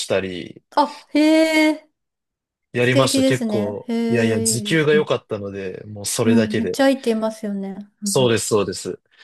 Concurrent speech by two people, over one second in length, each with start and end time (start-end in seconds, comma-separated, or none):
2.8-5.1